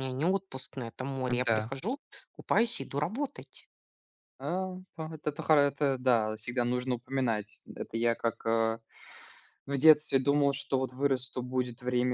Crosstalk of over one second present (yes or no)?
no